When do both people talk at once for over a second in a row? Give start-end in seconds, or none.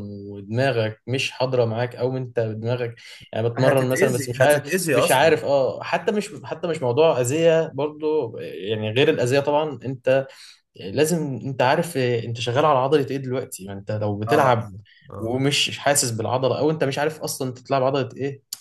3.6-5.3